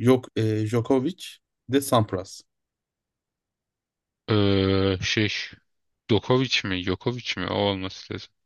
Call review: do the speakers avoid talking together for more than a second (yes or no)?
yes